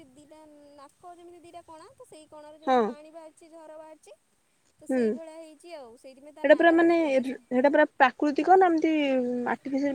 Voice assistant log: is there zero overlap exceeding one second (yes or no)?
no